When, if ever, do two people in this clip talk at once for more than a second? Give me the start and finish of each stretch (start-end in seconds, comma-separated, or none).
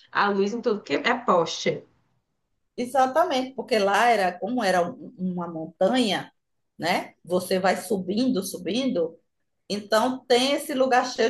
none